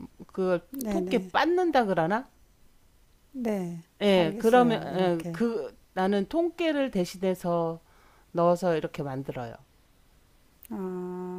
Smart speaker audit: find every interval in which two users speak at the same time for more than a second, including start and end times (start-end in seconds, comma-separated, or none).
4.0-5.4